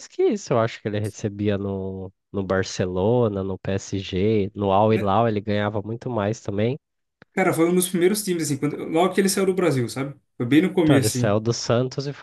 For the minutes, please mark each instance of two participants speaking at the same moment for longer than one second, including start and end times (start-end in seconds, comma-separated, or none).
none